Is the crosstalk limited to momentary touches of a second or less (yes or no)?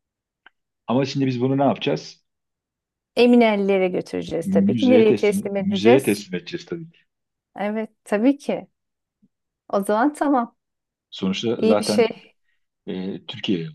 no